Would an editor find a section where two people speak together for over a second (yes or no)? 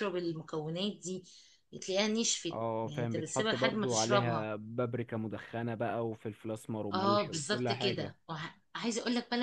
yes